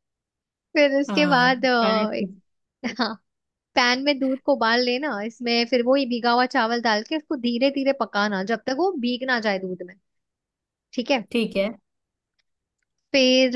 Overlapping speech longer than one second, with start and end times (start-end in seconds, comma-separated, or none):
1.1-2.4